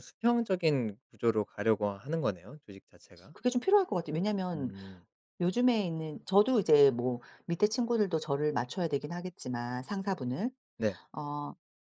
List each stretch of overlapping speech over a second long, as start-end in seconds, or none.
none